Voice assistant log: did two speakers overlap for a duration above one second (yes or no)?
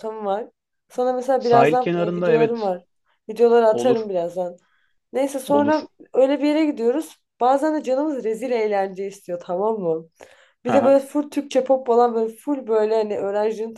yes